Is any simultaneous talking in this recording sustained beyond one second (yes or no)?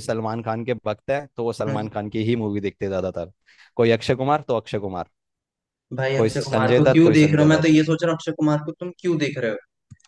yes